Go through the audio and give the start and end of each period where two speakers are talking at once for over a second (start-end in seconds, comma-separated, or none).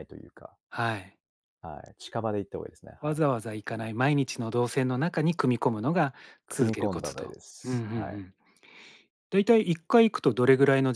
6.5-8.2